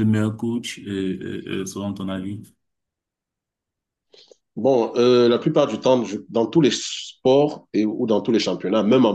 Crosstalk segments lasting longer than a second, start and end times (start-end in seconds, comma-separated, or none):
none